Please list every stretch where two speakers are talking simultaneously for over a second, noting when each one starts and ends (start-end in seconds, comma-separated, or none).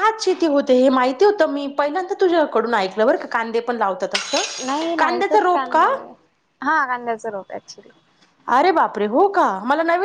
4.7-5.9